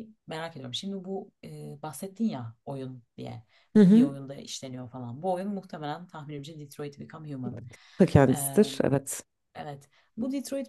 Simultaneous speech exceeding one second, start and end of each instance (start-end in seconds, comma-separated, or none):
none